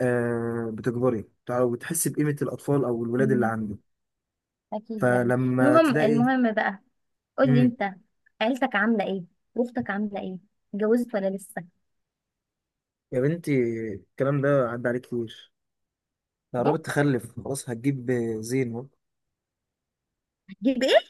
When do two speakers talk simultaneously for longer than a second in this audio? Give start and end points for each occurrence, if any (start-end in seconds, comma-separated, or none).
5.0-6.3